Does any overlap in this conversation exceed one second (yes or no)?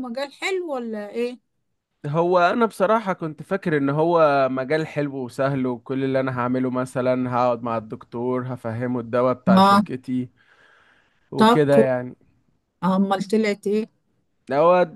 no